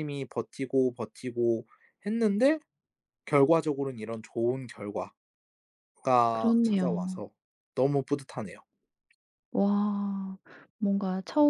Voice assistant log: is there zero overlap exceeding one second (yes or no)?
yes